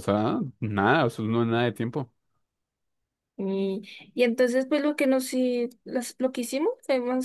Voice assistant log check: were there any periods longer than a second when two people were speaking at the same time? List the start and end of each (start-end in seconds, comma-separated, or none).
none